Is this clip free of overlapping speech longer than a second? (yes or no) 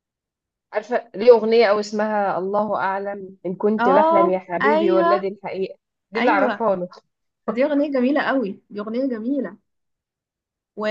no